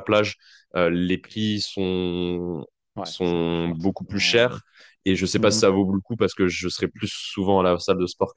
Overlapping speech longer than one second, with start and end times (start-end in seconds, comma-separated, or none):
3.0-4.5